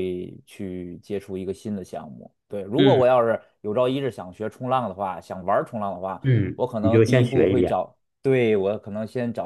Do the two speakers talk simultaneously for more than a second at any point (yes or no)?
yes